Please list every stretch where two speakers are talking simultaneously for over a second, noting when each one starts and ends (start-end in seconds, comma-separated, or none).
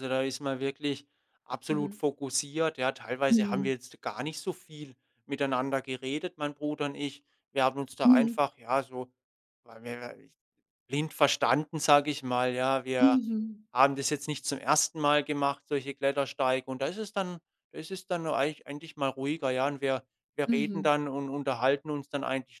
none